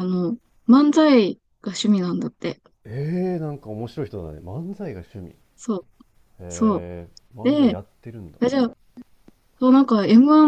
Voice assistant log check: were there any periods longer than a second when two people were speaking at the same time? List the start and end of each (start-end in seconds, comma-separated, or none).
none